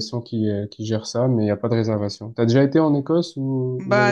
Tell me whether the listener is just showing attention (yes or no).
no